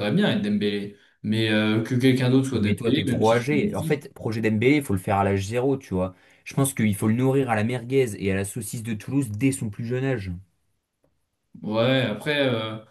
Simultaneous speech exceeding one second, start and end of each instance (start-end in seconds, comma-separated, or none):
2.5-4.0